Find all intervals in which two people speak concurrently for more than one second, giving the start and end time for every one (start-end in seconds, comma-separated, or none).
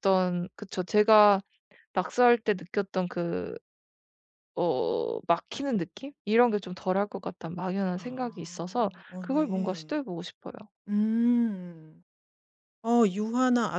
8.0-10.0